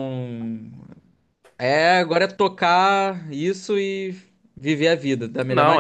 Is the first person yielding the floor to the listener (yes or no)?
yes